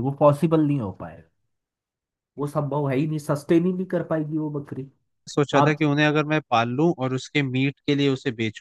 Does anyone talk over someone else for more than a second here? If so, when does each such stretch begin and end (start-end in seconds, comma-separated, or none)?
none